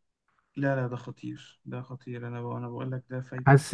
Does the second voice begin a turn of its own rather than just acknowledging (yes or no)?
yes